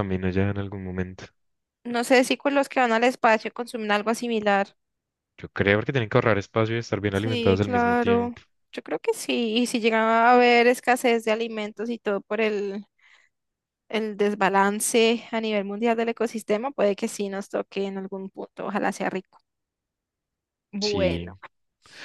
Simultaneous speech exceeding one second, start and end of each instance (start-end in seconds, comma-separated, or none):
7.1-8.3